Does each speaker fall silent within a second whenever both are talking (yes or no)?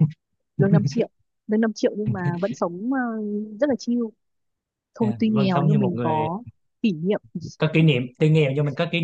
no